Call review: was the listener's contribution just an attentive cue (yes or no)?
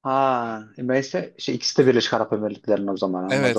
no